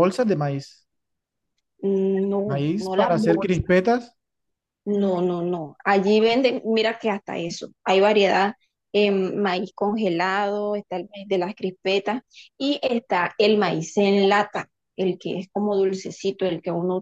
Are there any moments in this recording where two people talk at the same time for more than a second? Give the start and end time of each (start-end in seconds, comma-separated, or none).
2.5-3.7